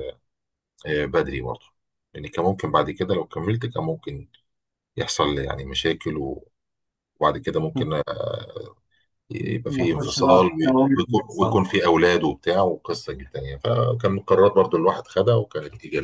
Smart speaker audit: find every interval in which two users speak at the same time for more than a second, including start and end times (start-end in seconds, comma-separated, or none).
9.7-11.6